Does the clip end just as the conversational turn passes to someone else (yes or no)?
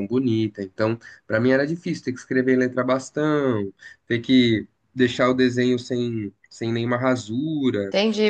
yes